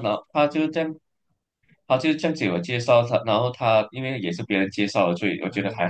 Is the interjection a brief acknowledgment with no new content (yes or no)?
no